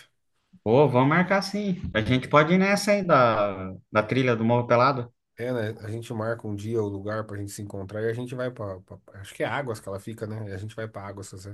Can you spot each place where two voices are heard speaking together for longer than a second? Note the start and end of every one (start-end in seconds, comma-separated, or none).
none